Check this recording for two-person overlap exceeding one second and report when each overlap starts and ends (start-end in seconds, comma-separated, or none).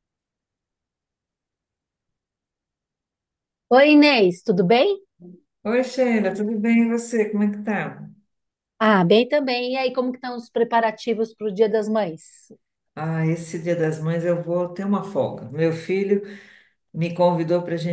none